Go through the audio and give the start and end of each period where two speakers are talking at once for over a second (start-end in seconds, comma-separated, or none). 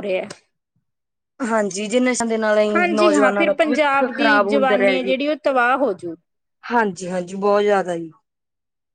2.8-5.1